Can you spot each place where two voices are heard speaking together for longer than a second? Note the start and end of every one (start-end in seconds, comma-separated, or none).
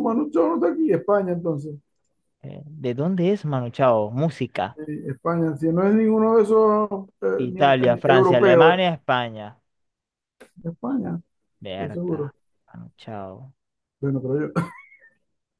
7.4-8.9